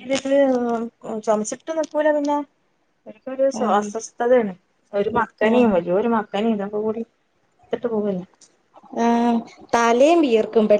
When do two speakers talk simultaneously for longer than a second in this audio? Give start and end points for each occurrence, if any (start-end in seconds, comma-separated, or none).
none